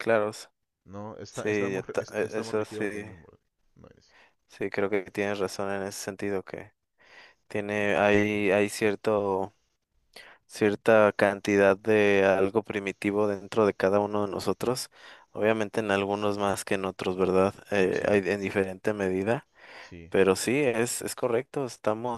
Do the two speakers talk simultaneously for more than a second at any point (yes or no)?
yes